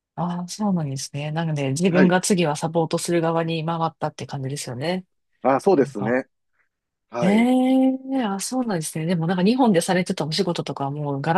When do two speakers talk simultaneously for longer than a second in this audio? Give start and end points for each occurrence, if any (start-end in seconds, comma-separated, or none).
none